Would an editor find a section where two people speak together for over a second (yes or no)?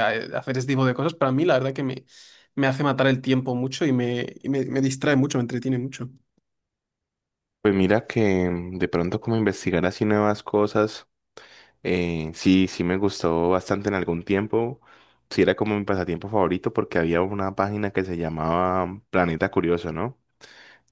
no